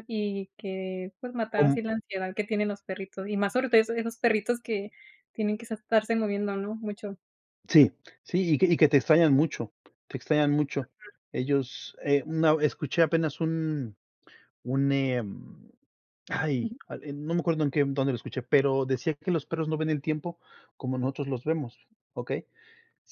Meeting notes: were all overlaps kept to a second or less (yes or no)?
yes